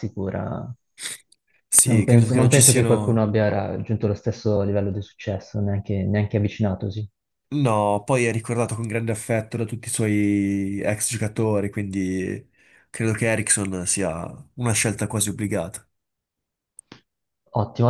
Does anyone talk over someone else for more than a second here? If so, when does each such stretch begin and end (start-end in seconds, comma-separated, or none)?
1.8-3.2